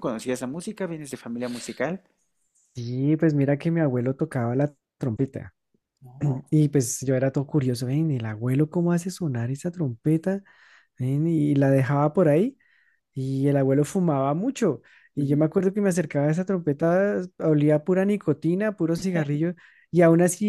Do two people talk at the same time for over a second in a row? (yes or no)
no